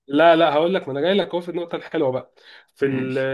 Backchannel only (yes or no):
yes